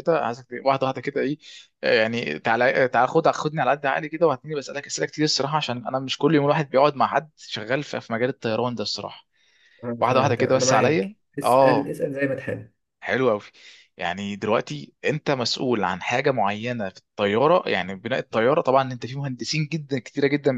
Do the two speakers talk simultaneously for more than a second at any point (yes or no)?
yes